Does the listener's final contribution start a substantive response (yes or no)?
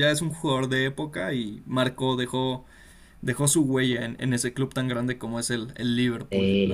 yes